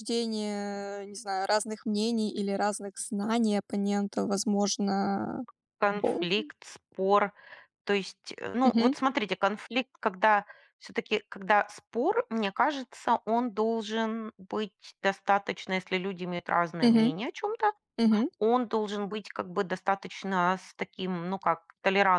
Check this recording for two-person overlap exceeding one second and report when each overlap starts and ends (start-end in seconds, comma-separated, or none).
none